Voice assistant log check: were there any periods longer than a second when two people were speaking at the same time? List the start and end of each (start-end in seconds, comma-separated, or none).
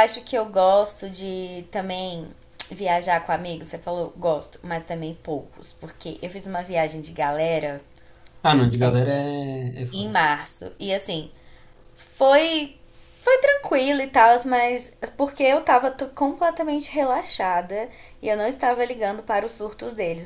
none